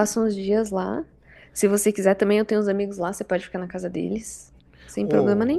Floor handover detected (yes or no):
yes